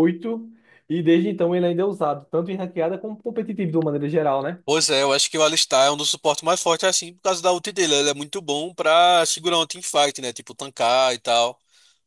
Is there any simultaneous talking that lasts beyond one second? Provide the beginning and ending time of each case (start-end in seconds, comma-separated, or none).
none